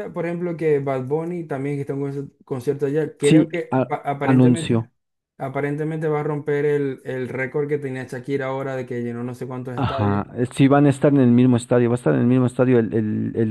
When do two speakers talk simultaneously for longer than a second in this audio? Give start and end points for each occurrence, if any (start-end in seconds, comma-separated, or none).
3.2-4.9